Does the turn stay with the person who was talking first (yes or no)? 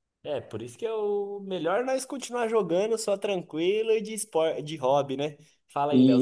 no